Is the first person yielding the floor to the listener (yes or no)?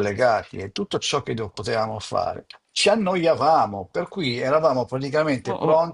no